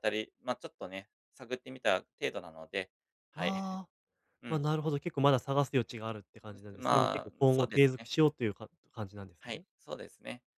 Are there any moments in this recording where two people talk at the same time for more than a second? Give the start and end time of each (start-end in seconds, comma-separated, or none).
6.7-8.1